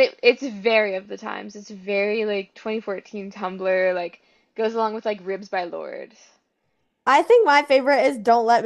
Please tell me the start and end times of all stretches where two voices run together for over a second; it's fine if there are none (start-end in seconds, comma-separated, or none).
none